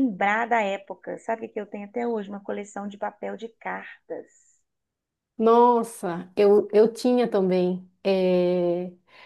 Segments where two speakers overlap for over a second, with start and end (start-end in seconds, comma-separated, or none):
none